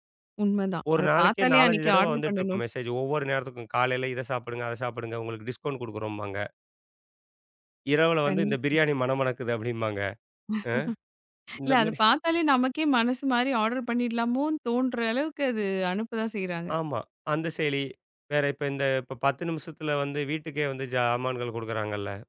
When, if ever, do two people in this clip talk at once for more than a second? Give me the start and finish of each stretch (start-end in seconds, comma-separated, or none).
0.9-2.6